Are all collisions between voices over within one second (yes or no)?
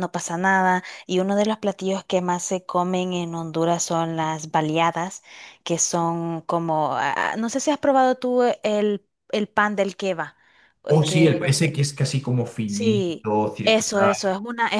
no